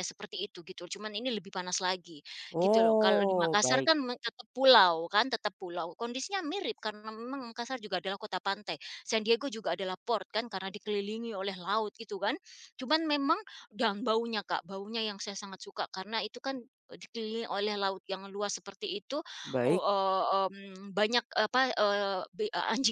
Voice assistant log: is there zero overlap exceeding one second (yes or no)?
no